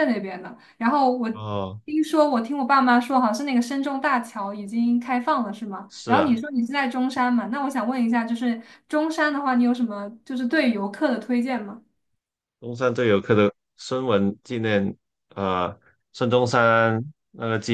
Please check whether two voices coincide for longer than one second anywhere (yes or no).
no